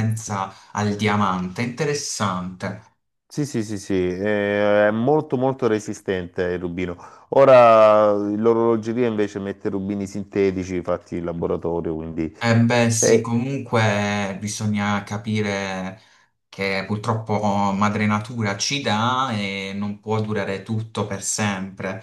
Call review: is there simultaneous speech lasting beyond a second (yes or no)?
no